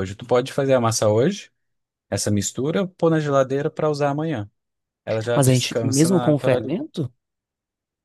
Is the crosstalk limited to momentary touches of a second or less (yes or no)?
no